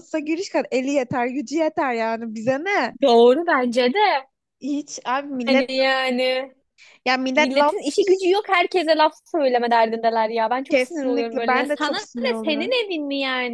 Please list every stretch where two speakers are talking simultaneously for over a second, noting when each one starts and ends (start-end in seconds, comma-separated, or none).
10.7-12.8